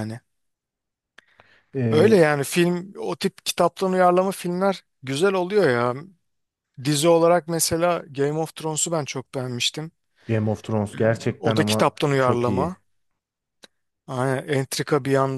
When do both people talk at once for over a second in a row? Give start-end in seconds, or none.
11.4-12.8